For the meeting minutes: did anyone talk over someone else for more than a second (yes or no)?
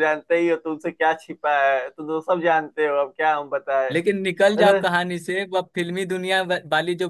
no